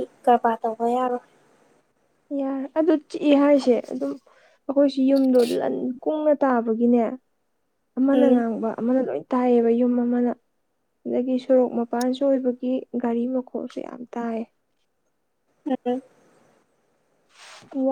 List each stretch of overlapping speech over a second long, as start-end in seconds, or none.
none